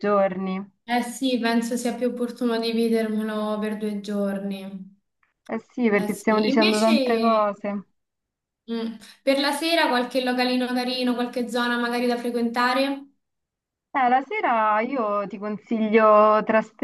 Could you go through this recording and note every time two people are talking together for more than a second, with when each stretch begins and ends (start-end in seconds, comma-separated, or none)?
5.9-7.5